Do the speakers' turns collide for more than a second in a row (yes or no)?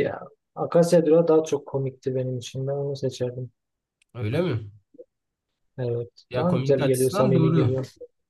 yes